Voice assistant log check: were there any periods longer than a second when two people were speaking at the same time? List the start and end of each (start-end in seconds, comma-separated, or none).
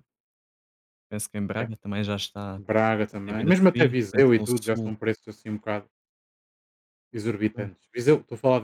3.2-4.9